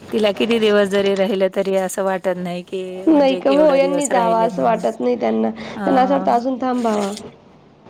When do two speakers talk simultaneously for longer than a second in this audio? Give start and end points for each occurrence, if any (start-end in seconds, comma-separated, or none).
3.1-4.8